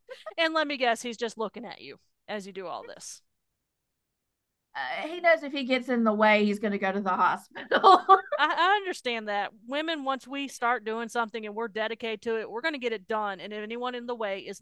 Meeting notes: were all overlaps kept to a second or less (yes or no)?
yes